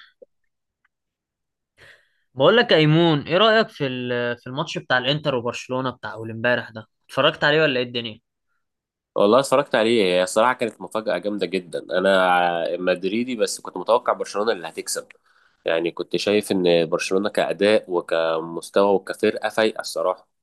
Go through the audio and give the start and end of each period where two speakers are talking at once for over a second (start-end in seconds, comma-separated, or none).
none